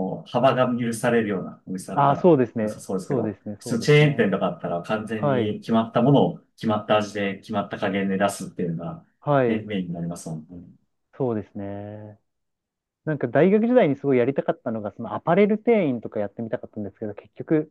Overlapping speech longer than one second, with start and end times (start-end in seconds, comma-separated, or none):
1.9-4.4